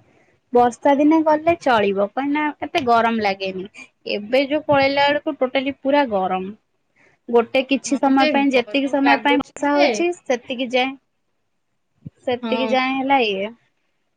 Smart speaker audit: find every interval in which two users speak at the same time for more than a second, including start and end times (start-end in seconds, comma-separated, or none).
8.0-9.9